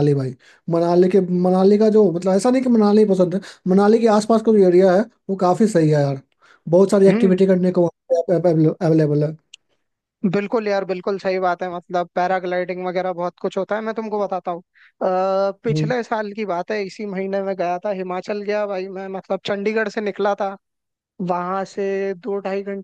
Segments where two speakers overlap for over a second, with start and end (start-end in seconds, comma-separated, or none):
none